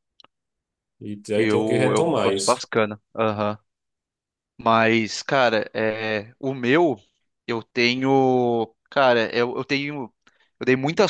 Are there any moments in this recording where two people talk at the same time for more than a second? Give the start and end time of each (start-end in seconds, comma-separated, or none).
1.4-2.6